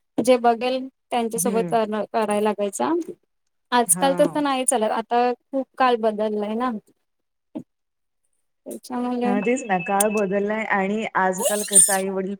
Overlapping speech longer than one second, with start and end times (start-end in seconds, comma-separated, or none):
none